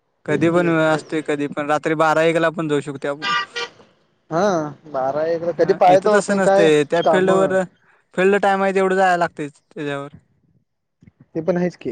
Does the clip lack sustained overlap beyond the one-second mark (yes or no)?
no